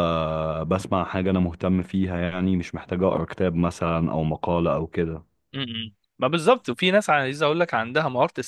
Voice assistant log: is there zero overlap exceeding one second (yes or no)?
yes